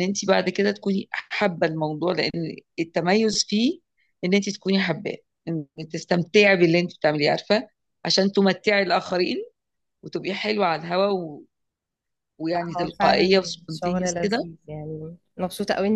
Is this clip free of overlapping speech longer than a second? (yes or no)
no